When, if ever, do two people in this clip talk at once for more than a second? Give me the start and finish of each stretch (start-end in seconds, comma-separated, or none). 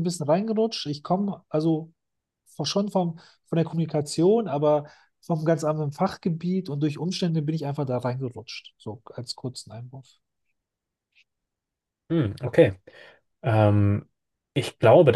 none